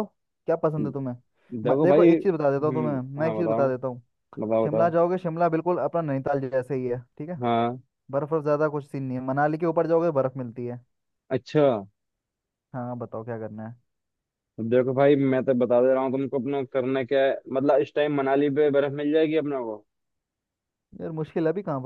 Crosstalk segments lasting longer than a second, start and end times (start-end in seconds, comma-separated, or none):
1.6-3.7